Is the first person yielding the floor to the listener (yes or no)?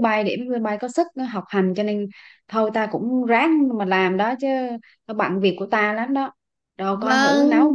yes